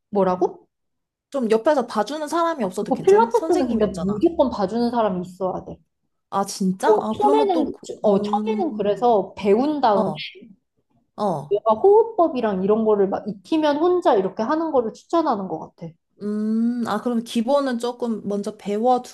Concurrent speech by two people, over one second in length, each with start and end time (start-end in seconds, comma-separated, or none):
2.6-4.2, 6.8-9.1